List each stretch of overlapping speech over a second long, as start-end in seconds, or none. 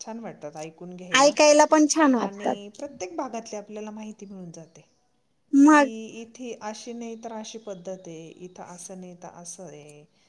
none